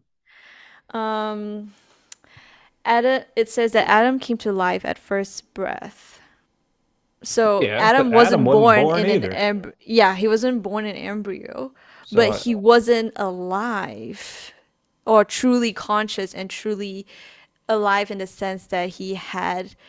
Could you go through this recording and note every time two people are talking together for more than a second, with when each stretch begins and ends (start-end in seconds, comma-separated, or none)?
7.5-9.4